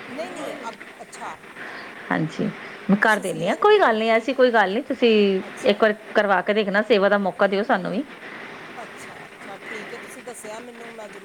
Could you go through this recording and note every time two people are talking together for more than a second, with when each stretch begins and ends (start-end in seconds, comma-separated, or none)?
3.0-4.5